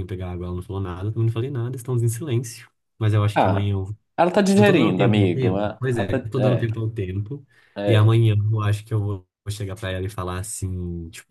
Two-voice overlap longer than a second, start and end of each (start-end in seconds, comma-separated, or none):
4.5-6.2